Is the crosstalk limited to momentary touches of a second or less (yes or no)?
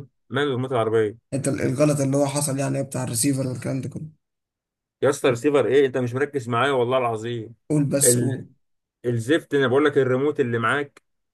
yes